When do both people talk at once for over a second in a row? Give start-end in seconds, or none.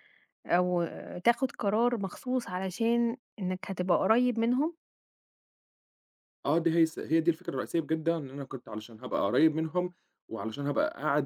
none